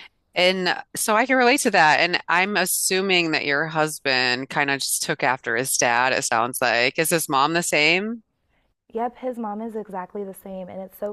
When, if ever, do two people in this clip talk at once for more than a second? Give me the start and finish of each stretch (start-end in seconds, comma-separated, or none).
none